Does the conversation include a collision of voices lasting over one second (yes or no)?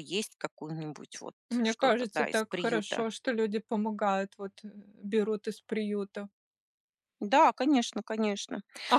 yes